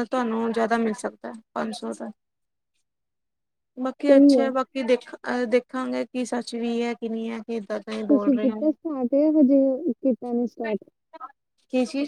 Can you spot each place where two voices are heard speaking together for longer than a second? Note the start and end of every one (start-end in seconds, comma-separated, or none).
none